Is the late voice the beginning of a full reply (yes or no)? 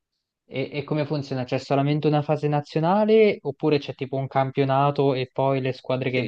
yes